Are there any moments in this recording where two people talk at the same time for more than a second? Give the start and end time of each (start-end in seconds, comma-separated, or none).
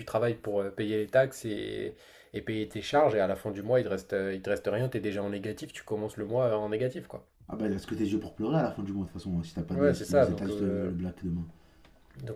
9.7-11.0